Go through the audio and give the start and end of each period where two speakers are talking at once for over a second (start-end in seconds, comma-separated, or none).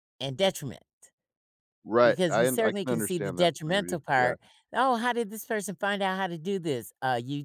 2.0-4.3